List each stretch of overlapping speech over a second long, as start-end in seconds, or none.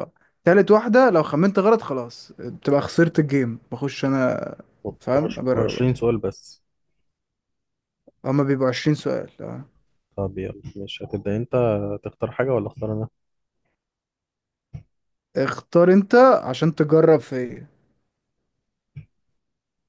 none